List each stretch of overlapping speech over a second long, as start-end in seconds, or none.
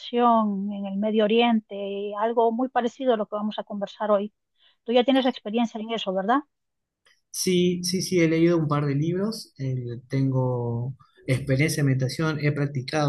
none